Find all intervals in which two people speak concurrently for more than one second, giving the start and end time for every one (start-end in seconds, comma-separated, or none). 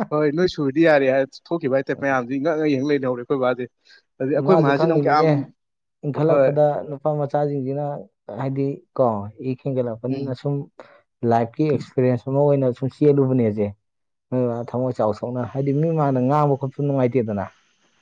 none